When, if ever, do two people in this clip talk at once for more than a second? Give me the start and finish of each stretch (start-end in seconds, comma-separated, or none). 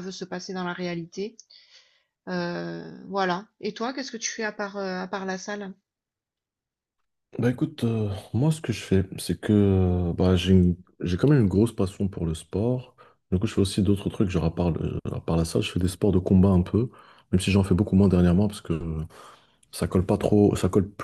none